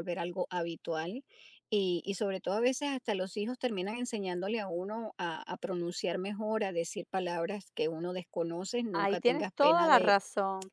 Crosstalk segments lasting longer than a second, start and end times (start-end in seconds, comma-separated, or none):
8.9-10.2